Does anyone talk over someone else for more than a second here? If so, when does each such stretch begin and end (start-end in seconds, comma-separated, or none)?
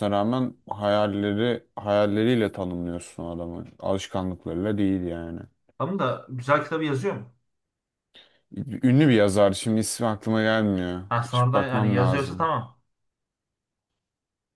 11.1-12.5